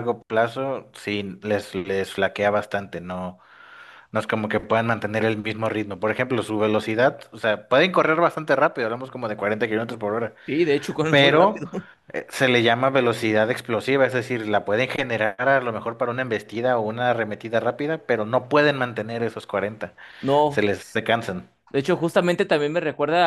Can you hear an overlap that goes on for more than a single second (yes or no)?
no